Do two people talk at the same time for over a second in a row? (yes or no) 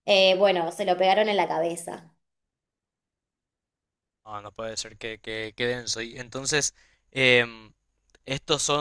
no